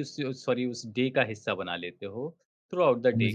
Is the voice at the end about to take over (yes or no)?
no